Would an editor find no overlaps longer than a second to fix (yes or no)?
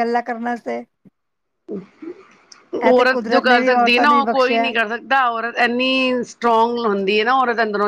no